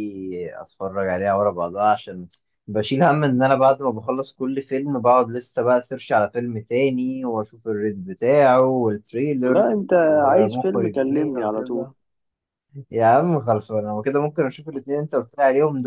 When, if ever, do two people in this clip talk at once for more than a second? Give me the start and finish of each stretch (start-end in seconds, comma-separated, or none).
10.3-11.9